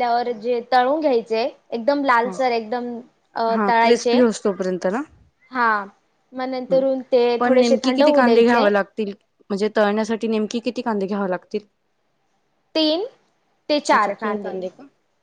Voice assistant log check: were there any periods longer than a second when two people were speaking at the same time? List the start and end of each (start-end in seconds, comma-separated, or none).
7.4-8.7